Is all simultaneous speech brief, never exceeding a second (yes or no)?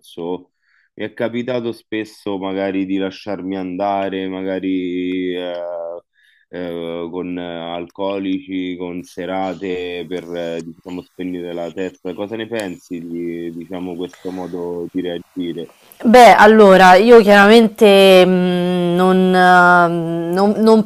yes